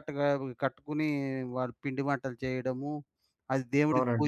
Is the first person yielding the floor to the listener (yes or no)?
no